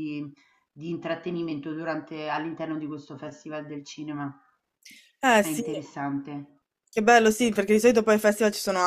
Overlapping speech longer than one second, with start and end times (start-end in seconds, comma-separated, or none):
none